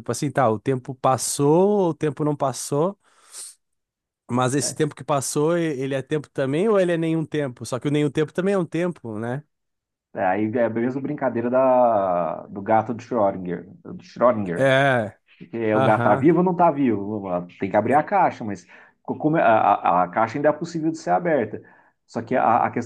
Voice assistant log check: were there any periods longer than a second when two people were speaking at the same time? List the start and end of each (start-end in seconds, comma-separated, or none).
none